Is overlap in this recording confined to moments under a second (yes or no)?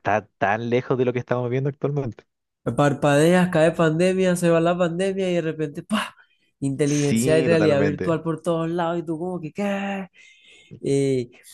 no